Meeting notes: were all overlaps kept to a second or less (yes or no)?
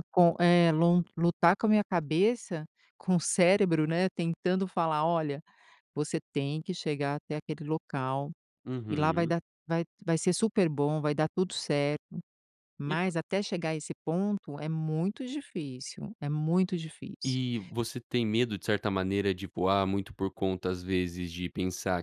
yes